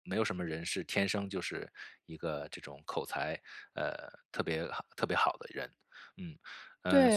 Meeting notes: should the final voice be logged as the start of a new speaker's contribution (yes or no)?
yes